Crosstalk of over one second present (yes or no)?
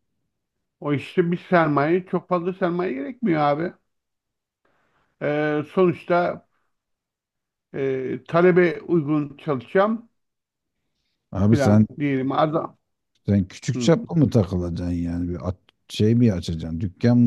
no